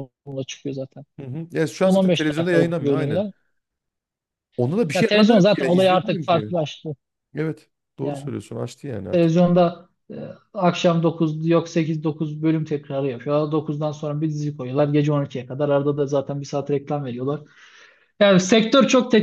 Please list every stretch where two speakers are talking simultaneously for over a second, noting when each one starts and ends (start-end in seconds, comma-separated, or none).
1.8-3.2, 4.9-6.5